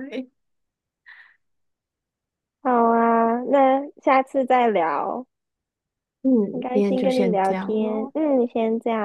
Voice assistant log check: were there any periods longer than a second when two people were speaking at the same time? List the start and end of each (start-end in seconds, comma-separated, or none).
6.7-8.1